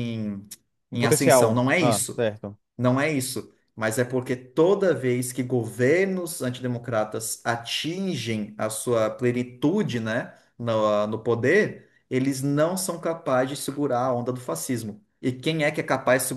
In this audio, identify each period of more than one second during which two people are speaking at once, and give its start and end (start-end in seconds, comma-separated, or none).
0.9-2.3